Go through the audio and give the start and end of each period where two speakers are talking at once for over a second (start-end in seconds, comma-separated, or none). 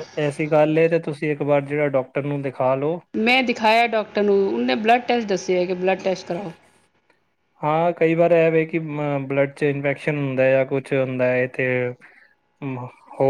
none